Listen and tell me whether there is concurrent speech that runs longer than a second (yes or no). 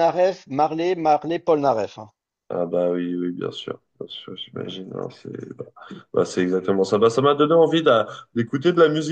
no